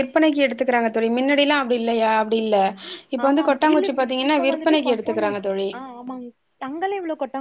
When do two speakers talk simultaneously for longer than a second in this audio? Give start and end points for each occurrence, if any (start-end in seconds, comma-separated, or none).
3.2-5.3